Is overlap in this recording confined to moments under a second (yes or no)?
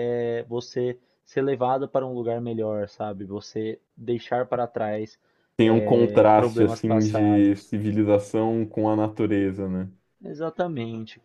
no